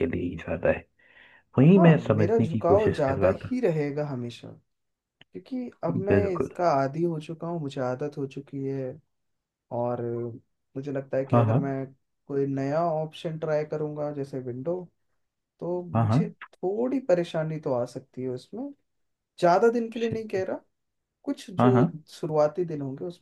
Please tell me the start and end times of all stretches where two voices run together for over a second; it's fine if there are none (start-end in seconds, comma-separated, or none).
1.8-3.6